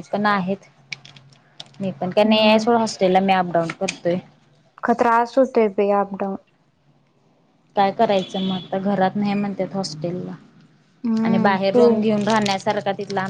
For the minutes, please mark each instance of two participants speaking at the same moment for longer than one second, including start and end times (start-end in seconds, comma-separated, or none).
none